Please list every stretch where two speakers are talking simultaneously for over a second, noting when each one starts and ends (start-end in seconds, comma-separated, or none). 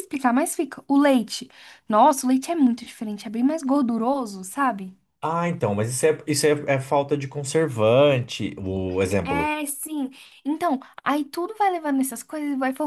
none